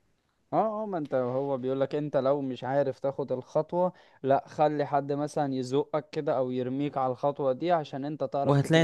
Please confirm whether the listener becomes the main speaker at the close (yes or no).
yes